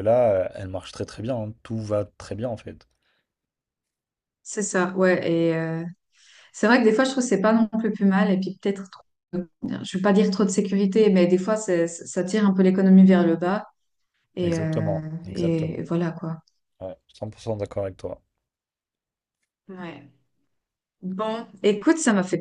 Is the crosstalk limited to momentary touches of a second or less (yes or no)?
no